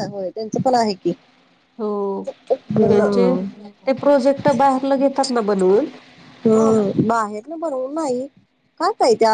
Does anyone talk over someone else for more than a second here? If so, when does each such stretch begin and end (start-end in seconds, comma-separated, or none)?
none